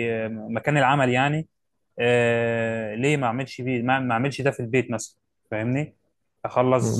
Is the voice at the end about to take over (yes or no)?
yes